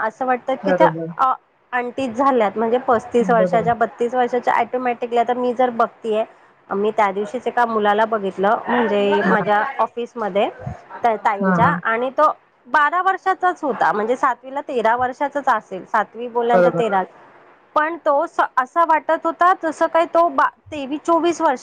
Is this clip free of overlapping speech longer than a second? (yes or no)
yes